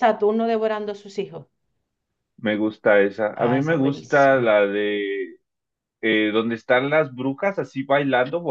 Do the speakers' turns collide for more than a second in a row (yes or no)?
yes